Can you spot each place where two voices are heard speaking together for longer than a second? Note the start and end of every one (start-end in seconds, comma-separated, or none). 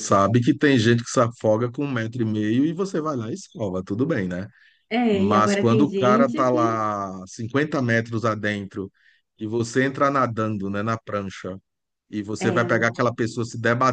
5.1-6.8